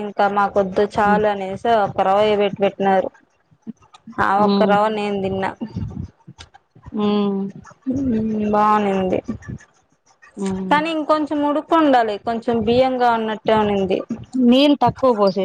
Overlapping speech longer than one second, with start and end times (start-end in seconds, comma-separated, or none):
none